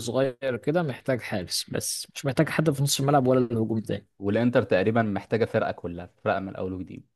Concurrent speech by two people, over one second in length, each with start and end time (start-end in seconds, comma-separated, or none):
none